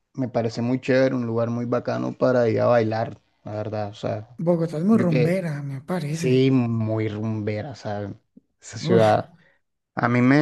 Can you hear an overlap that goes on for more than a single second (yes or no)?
no